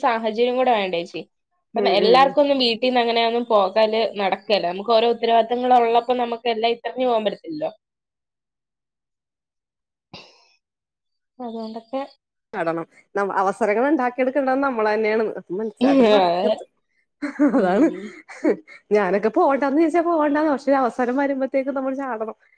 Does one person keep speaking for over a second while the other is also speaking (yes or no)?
no